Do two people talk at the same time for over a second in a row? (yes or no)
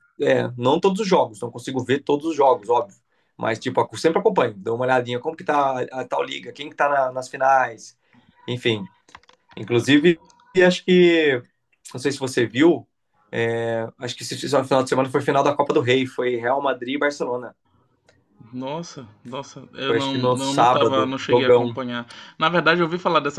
yes